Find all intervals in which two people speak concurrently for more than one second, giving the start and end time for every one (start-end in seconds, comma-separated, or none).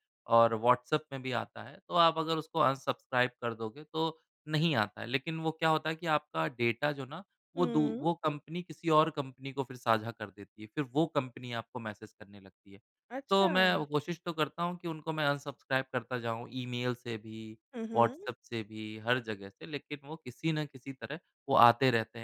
none